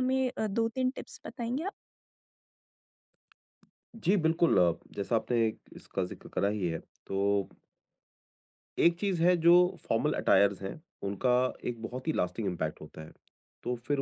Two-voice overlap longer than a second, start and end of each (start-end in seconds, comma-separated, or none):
none